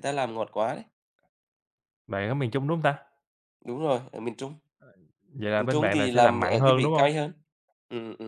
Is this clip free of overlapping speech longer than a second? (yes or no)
no